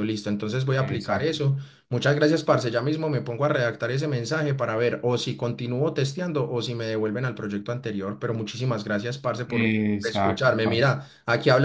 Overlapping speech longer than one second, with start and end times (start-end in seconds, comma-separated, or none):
9.5-10.9